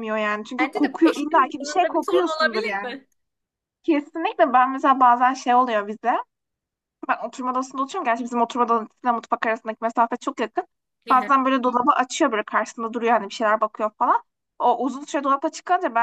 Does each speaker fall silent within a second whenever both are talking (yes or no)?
no